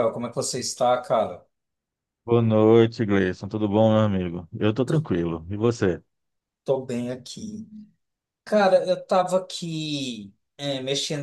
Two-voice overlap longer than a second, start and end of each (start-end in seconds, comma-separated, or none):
none